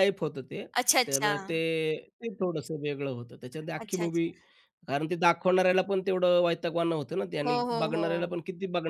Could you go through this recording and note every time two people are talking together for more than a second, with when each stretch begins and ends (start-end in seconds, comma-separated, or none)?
none